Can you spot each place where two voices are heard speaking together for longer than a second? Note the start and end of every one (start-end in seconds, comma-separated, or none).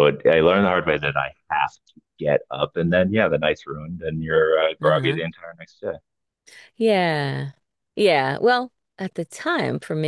none